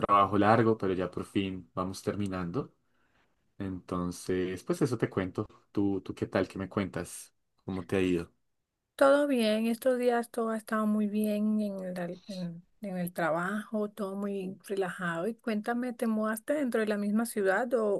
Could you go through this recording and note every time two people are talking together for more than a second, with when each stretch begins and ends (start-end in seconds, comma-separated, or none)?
none